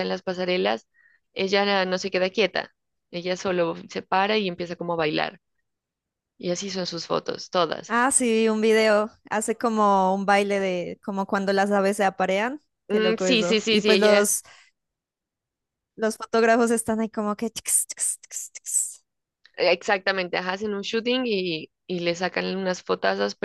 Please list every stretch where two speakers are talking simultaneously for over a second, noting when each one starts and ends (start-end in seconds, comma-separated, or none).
12.9-14.3